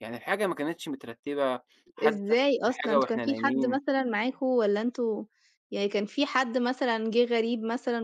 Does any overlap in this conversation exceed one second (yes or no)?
yes